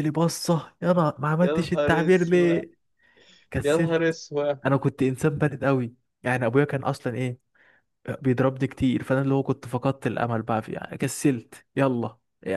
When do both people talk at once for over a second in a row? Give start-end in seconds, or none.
1.4-2.6